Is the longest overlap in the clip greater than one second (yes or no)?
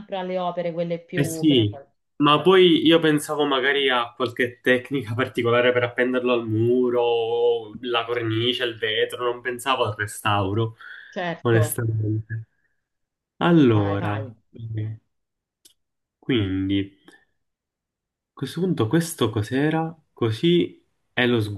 no